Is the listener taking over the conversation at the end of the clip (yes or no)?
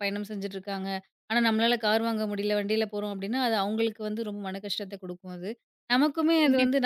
no